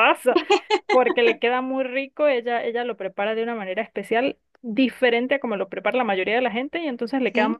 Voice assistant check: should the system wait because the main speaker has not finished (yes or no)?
yes